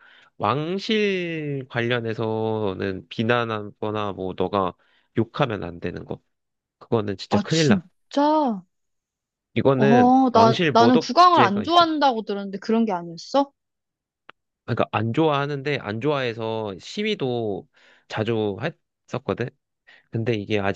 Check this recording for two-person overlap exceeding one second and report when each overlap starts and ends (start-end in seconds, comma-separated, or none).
9.8-11.8